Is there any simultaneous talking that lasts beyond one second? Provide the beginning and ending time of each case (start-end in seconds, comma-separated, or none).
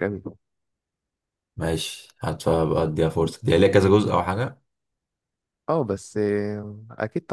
none